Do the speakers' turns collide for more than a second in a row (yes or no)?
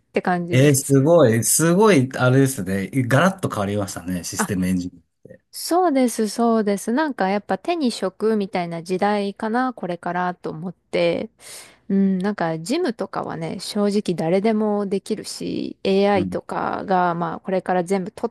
no